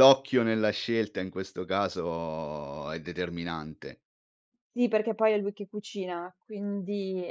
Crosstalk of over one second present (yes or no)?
no